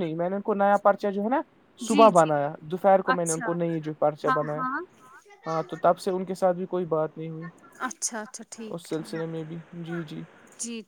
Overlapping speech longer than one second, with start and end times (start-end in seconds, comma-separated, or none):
7.8-9.3